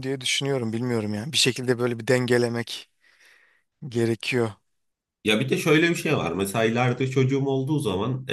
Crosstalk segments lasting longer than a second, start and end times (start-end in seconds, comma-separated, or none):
none